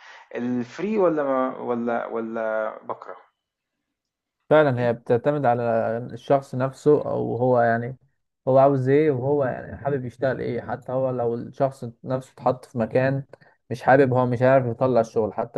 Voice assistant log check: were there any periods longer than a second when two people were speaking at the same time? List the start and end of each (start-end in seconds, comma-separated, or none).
none